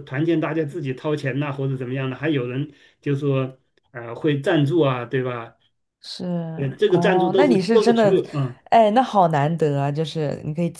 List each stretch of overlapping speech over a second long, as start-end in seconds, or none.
6.9-8.2